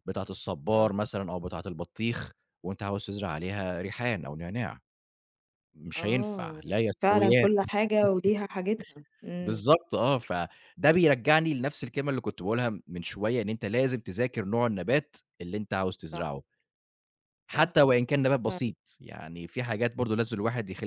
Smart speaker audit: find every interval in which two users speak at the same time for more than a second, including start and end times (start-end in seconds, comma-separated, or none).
6.0-7.5